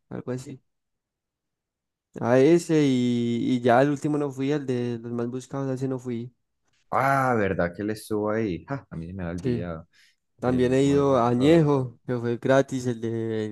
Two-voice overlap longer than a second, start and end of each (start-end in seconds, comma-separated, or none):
10.4-11.7